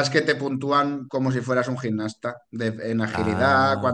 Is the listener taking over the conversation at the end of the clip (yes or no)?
no